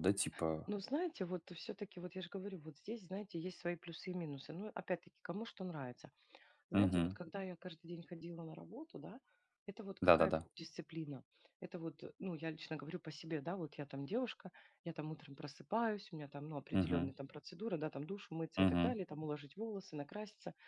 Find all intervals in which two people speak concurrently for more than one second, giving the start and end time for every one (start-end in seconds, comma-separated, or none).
none